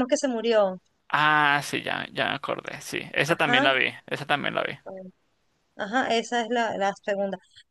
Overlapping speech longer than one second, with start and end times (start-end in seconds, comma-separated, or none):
none